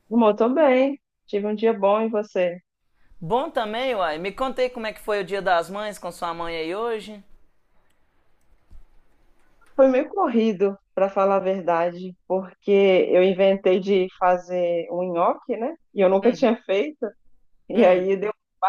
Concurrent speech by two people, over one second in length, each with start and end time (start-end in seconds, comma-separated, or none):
none